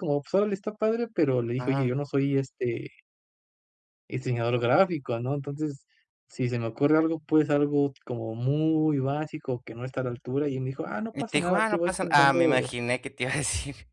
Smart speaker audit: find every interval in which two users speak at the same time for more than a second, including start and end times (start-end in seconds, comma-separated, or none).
11.1-12.7